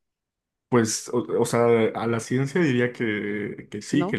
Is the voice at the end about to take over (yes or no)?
no